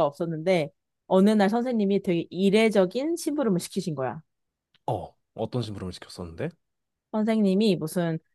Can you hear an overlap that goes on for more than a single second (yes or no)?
no